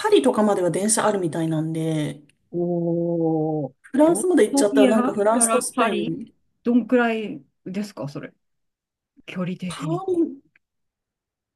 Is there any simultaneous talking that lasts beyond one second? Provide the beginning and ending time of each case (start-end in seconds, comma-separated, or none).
3.8-6.2